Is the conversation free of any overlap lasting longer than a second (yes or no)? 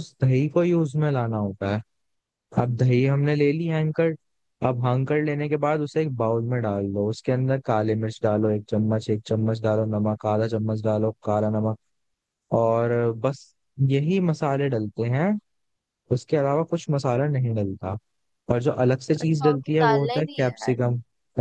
no